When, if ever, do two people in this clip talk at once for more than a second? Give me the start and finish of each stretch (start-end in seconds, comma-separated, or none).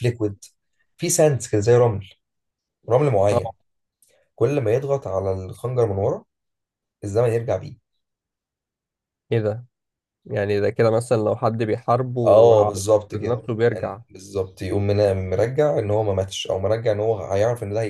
12.3-14.0